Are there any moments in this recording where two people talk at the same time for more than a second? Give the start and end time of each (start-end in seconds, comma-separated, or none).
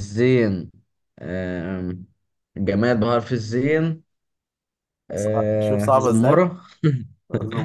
5.2-6.4